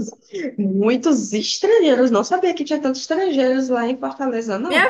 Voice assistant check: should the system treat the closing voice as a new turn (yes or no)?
yes